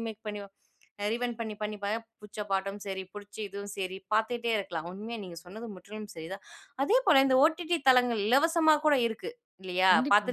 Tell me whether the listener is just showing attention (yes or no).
yes